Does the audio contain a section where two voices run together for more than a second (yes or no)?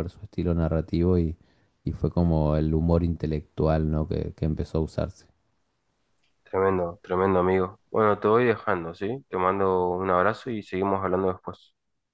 no